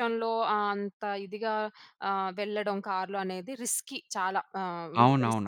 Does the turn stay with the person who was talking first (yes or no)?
no